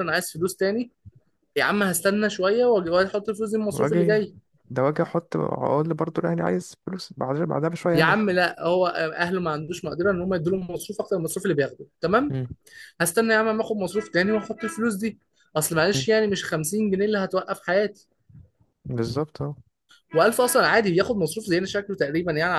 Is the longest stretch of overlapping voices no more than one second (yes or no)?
yes